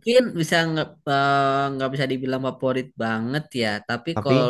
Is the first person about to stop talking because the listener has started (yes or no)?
no